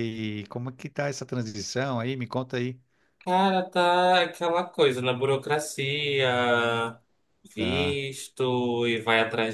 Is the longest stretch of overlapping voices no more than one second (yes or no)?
yes